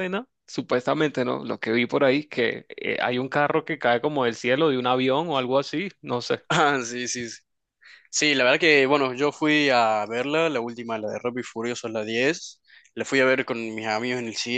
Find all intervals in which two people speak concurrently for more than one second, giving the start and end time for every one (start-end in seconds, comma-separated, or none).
none